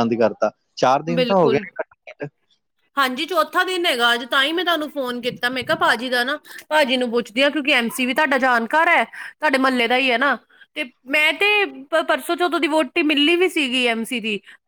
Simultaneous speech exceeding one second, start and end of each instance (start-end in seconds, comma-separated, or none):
none